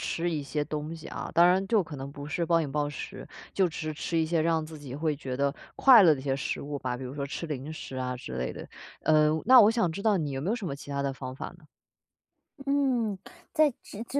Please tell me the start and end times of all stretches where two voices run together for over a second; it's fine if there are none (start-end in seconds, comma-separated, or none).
none